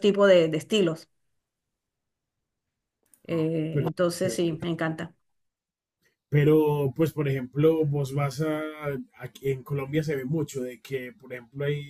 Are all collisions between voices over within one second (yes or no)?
yes